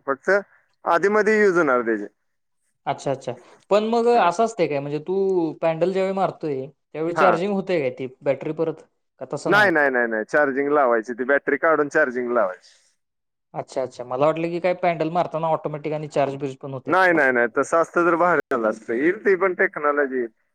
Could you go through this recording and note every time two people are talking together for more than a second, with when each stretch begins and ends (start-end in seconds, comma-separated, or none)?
none